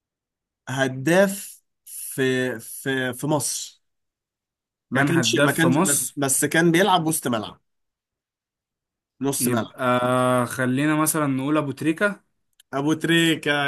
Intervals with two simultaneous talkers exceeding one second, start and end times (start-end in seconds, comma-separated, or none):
4.9-6.2